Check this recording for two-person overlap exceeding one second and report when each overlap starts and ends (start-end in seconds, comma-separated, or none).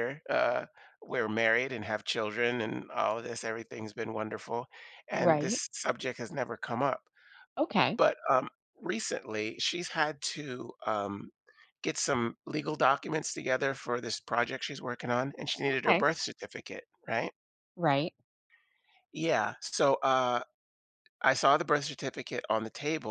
none